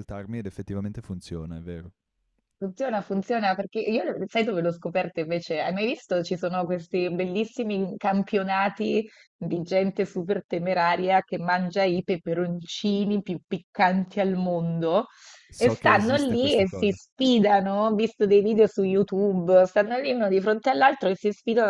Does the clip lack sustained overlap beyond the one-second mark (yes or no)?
no